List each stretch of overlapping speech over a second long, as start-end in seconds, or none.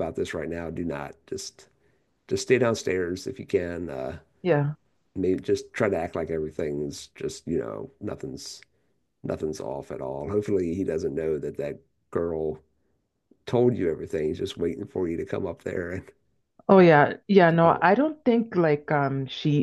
none